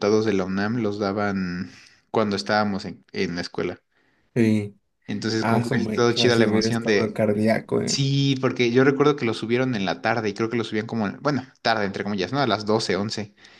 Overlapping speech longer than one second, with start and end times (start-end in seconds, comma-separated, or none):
5.4-7.2